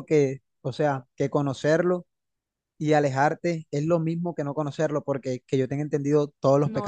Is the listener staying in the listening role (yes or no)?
no